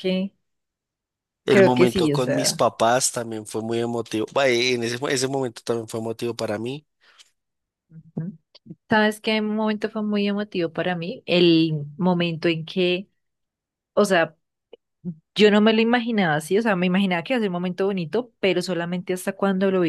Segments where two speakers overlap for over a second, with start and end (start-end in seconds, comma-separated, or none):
1.5-2.7